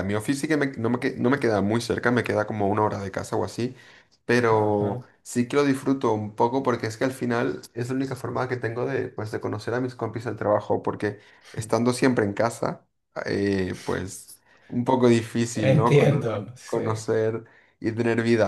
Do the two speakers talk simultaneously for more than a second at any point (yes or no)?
yes